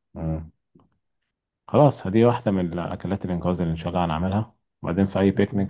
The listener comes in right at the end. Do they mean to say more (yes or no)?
no